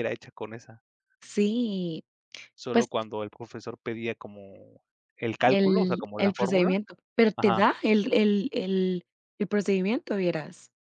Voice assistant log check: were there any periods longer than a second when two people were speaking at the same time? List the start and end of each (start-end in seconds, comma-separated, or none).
5.5-6.7